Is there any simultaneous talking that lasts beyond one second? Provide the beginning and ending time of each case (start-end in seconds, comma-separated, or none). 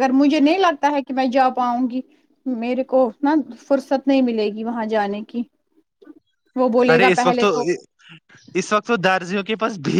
none